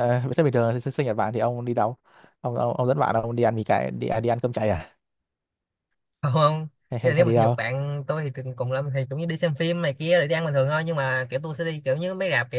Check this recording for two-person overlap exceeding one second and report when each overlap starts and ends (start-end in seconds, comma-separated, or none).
none